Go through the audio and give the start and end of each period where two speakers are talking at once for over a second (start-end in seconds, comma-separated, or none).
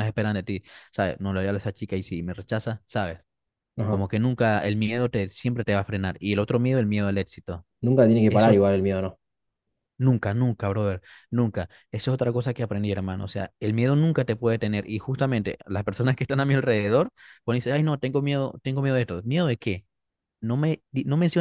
none